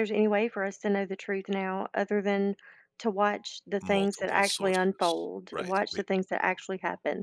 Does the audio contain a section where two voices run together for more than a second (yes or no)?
yes